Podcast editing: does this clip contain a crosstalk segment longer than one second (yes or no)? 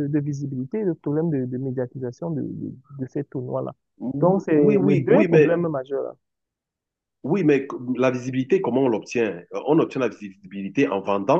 yes